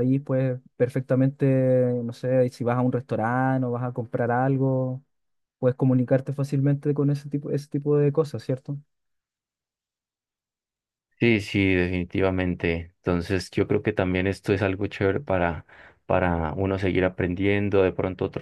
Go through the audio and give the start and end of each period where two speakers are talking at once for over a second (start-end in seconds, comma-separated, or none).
none